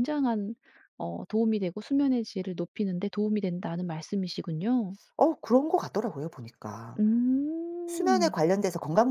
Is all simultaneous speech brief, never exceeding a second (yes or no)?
yes